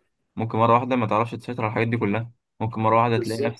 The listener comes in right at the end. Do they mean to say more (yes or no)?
no